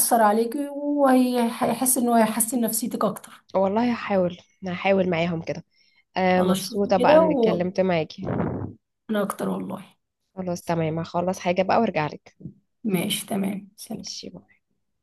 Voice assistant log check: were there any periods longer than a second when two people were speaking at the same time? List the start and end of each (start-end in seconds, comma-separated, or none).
6.3-7.7